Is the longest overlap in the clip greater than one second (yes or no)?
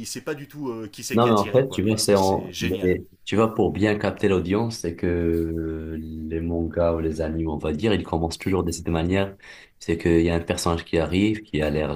yes